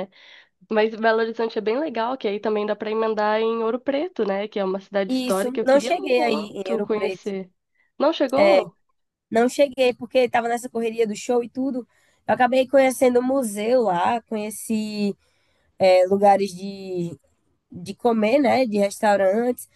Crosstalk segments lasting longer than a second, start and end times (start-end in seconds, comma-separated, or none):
5.1-7.3